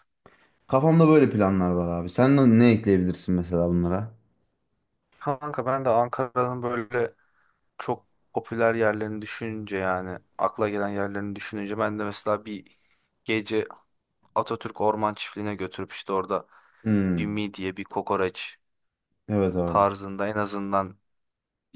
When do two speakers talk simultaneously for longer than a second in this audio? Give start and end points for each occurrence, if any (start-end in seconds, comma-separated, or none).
none